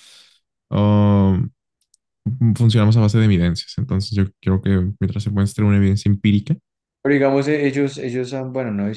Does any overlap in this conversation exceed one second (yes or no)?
no